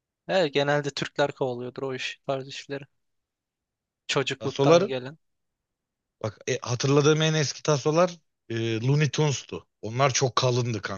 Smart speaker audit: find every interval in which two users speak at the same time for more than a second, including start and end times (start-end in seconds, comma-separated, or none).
none